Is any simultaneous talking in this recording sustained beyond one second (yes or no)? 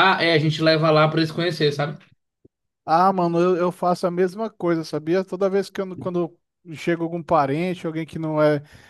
no